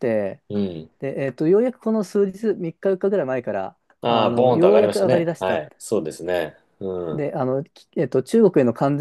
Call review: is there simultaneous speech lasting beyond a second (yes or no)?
yes